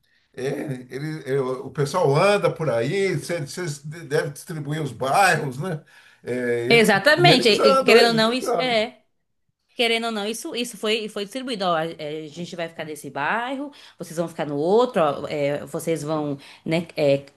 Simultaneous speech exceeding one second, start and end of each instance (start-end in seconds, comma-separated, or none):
7.2-8.8